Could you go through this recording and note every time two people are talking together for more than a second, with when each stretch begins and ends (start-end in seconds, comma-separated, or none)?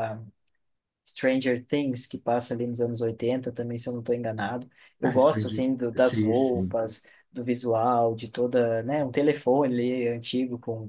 5.0-6.8